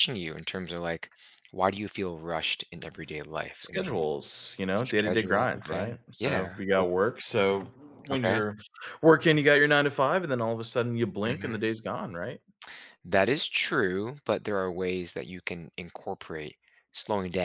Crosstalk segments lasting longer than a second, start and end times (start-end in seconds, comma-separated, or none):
4.7-6.8